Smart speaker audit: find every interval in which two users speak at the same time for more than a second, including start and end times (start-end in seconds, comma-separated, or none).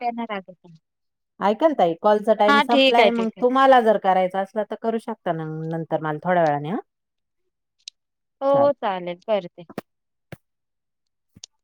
none